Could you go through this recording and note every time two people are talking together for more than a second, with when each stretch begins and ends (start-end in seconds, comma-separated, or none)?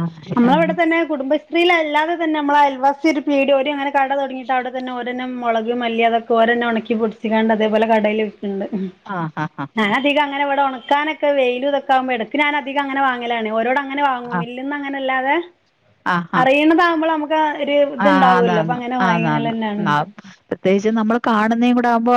18.1-19.5